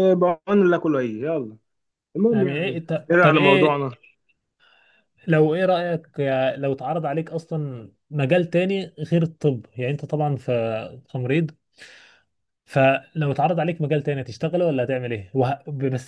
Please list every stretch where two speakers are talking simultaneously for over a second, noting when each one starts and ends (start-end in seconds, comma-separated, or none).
2.3-3.8